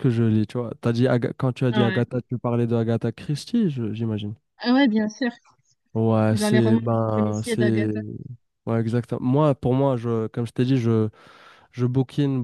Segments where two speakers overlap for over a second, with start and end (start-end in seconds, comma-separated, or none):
6.3-7.9